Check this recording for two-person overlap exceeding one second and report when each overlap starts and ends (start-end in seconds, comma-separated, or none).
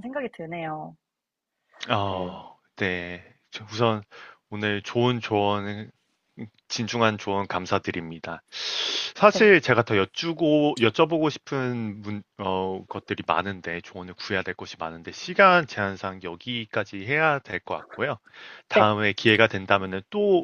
none